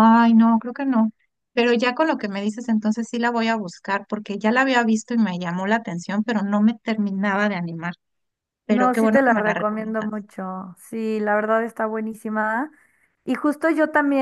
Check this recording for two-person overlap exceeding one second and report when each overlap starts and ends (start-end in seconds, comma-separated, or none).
8.7-10.1